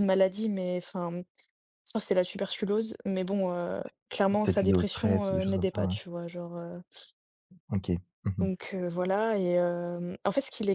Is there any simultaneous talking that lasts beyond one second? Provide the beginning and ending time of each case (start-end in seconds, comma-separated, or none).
4.3-6.0